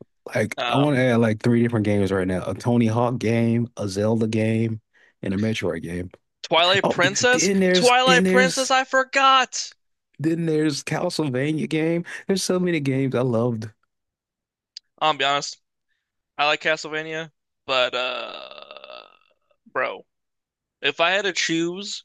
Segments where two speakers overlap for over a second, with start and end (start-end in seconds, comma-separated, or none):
6.8-8.7